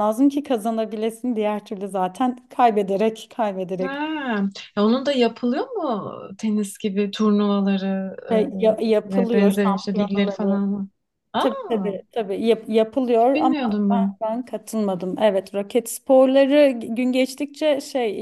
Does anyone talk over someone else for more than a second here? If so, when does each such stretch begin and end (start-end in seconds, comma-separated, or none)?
9.1-10.6